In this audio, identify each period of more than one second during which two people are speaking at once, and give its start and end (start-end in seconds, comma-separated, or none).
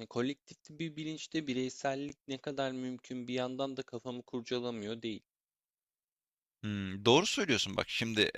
none